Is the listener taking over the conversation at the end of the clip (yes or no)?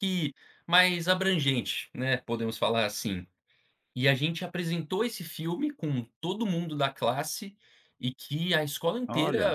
no